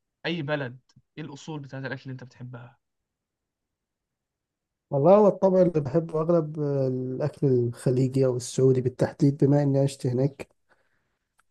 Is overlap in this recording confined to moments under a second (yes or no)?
yes